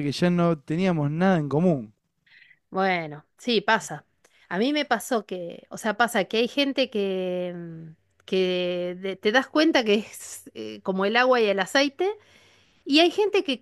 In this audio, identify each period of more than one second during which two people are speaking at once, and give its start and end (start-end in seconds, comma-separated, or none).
none